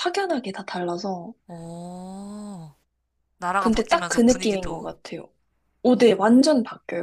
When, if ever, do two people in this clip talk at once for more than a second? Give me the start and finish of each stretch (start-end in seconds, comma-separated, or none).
3.6-4.9